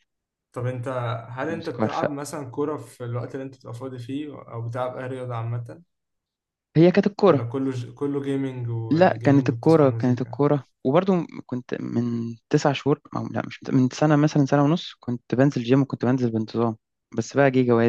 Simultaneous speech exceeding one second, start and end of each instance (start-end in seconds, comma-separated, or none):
8.9-10.4